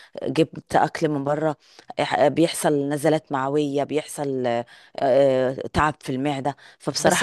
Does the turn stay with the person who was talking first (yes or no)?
no